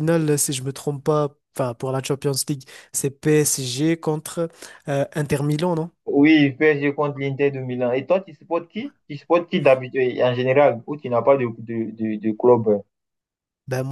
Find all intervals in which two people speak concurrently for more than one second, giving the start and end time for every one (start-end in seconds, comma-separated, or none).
none